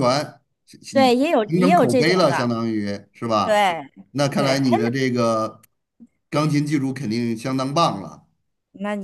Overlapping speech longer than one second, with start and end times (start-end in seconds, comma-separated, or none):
0.9-2.5